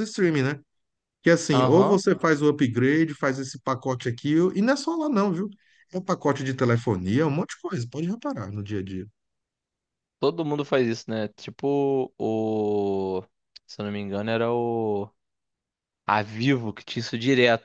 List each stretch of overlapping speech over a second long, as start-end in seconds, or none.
none